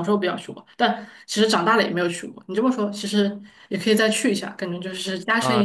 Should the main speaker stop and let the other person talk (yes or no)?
yes